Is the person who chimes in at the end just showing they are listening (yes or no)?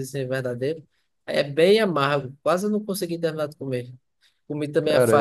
yes